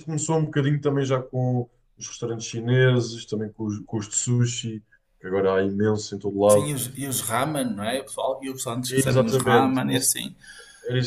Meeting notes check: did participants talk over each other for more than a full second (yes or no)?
yes